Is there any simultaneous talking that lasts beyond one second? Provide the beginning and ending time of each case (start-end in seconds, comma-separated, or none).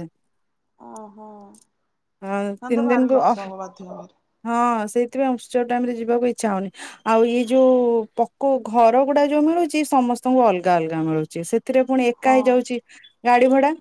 none